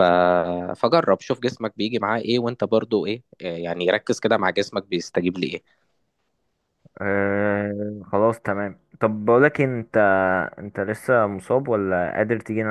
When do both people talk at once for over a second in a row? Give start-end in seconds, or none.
none